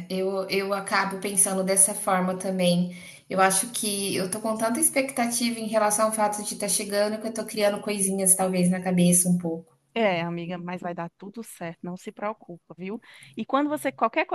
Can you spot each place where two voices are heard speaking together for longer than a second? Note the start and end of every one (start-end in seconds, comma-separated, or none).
none